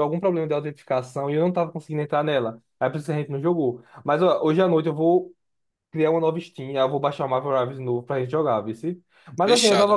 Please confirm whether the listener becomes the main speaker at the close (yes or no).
no